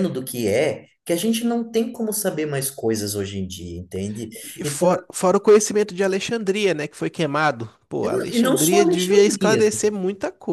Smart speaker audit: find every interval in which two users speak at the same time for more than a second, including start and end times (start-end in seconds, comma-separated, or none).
8.0-9.7